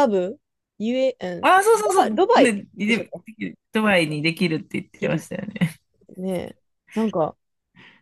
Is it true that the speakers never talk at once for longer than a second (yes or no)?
no